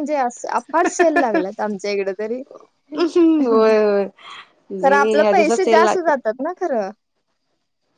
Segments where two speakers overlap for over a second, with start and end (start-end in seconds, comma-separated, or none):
4.8-6.3